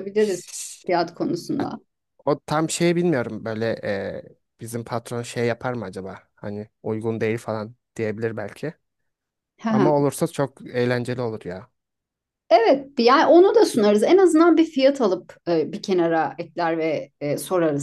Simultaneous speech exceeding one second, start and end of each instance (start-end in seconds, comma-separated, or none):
none